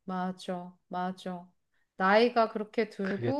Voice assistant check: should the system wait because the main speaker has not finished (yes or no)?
yes